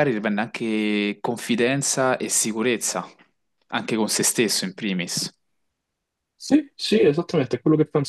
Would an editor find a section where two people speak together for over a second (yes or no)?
no